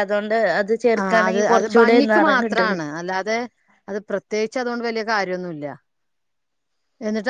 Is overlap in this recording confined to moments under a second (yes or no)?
no